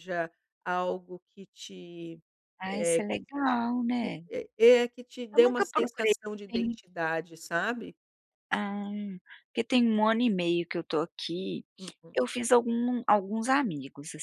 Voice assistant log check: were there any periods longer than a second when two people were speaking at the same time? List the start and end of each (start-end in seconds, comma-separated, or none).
5.3-6.8